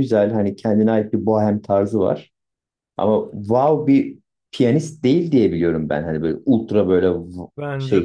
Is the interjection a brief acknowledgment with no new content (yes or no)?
no